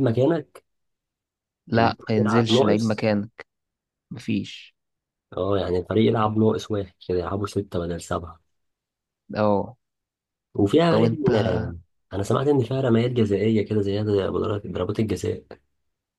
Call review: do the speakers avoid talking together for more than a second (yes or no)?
no